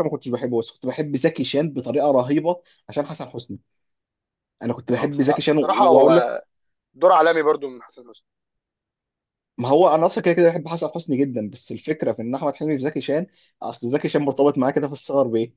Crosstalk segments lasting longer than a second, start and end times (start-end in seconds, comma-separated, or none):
5.0-6.2